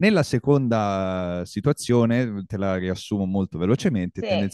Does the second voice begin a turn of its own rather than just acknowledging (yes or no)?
no